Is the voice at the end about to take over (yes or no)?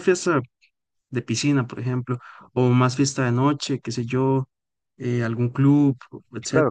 yes